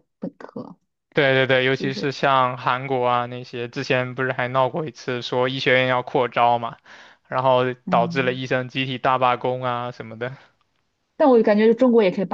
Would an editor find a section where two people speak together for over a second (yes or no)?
no